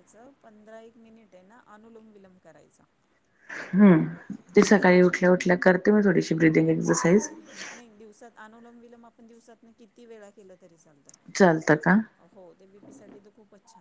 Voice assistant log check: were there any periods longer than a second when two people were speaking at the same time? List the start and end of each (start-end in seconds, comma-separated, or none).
none